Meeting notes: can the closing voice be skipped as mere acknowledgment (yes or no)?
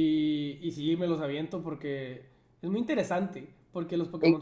yes